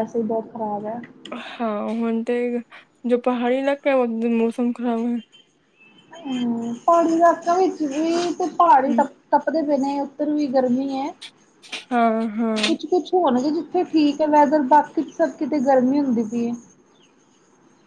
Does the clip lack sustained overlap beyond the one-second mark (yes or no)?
yes